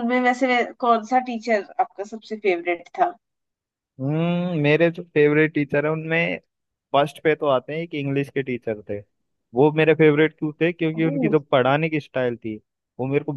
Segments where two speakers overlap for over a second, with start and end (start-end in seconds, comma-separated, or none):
none